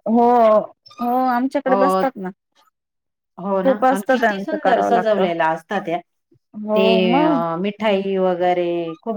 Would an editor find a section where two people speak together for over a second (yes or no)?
yes